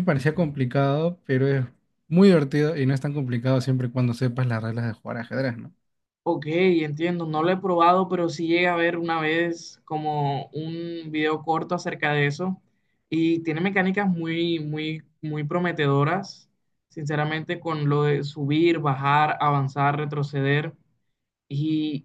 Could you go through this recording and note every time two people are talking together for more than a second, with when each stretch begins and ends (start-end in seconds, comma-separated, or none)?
none